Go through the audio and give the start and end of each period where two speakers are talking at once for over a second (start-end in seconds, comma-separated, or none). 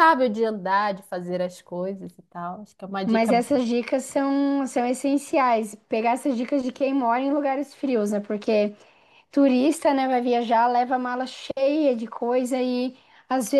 none